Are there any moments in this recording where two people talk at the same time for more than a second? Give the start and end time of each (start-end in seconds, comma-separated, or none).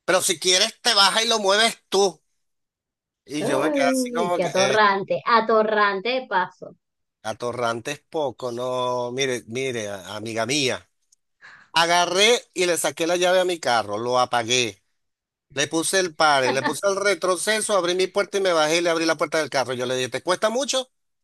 3.4-4.8